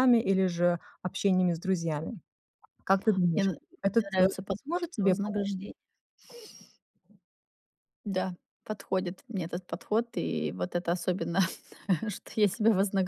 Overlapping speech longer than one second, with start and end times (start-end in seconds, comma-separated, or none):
3.3-5.5